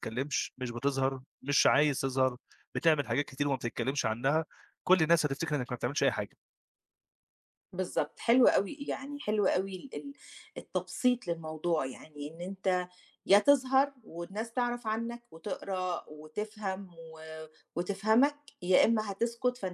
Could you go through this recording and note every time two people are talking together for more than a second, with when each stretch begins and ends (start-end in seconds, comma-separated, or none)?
none